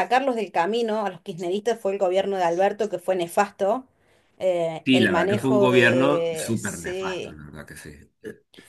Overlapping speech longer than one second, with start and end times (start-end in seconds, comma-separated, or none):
4.8-7.4